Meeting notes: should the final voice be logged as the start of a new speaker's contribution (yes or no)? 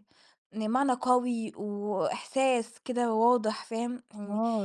yes